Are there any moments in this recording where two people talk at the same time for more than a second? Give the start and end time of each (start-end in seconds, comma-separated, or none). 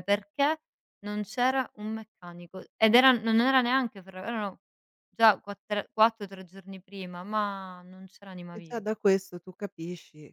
none